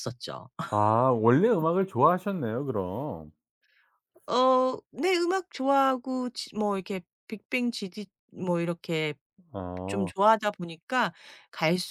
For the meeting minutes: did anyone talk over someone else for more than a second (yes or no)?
no